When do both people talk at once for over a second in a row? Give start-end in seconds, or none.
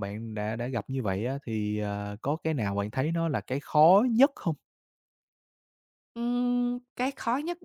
none